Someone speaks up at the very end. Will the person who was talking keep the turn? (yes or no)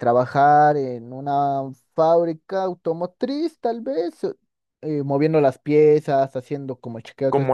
yes